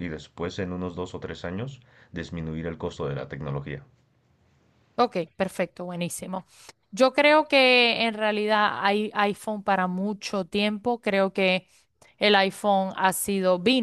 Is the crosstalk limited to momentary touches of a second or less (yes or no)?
yes